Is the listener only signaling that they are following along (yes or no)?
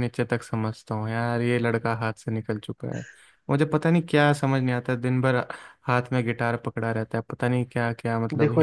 no